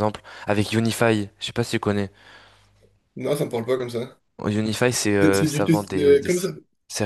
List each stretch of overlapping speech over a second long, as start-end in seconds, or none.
5.2-6.5